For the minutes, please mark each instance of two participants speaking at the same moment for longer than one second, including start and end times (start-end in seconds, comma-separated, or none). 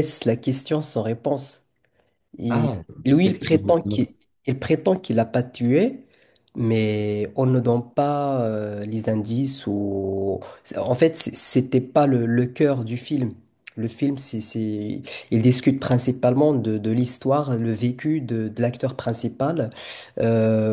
2.5-4.1